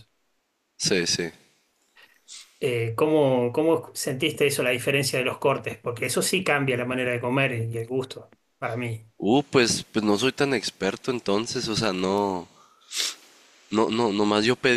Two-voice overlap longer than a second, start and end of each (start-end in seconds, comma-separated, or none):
none